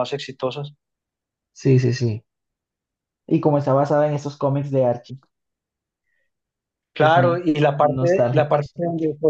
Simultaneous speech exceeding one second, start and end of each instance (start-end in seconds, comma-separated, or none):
7.0-8.8